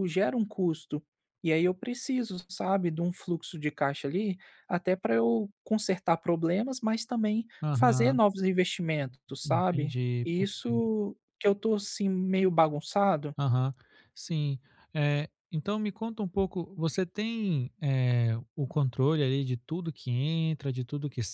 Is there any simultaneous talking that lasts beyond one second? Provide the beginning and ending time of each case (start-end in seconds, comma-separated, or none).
9.4-10.9